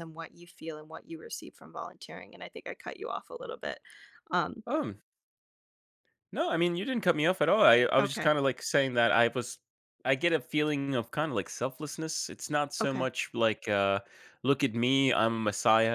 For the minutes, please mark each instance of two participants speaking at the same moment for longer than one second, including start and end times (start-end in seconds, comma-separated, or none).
none